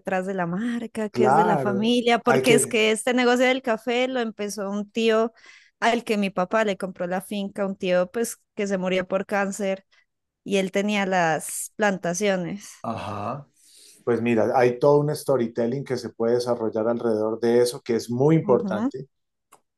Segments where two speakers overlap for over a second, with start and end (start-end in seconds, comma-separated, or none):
1.1-2.7